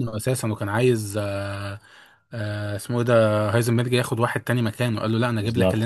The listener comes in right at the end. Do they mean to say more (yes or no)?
no